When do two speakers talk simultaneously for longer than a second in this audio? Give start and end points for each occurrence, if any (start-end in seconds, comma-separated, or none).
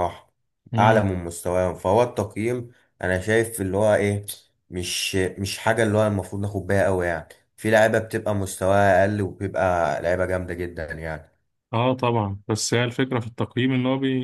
none